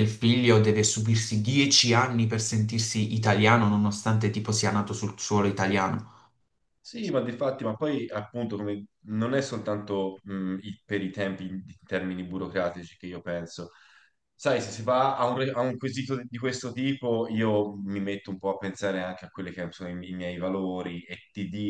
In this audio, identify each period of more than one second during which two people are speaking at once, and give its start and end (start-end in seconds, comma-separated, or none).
none